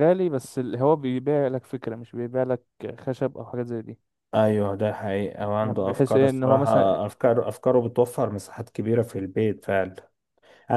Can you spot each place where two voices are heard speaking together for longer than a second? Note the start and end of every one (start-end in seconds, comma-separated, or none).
5.4-7.0